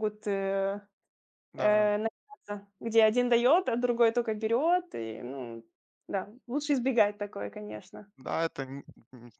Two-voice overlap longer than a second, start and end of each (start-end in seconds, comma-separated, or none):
none